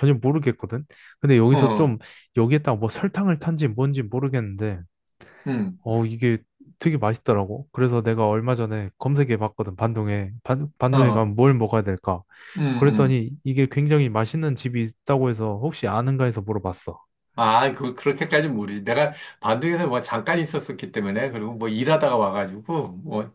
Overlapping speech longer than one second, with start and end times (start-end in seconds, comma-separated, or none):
none